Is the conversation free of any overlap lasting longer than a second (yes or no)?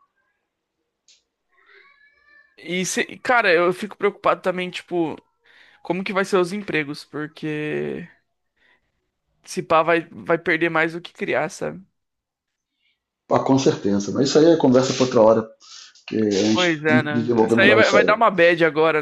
no